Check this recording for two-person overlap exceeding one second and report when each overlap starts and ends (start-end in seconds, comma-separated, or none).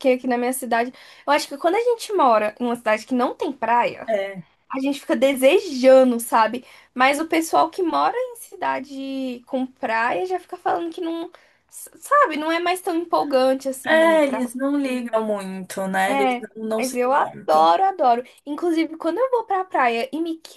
16.1-17.6